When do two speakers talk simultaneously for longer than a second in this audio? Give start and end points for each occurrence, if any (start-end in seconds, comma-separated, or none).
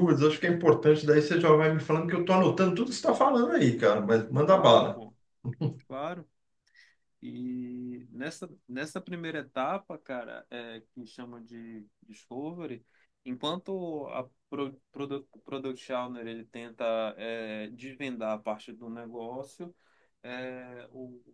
none